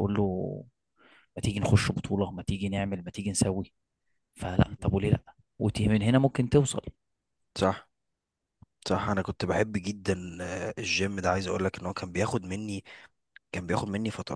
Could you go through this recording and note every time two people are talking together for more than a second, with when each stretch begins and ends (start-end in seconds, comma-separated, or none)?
none